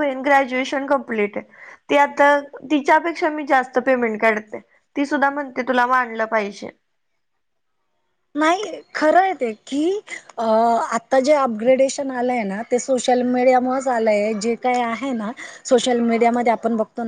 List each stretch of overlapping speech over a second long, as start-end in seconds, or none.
none